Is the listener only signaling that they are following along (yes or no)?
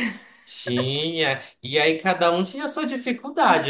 yes